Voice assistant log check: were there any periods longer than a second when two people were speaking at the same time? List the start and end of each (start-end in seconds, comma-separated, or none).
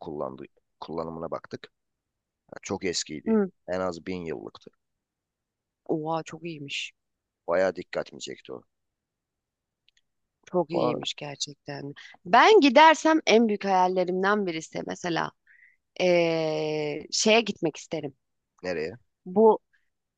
none